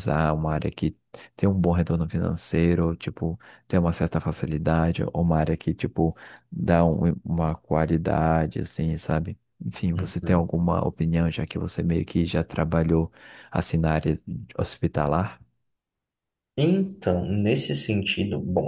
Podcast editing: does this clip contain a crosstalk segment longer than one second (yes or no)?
no